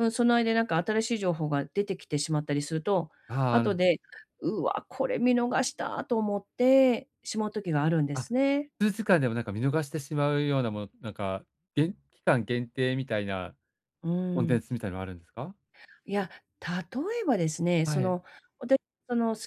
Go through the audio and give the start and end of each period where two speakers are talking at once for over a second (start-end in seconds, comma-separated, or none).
none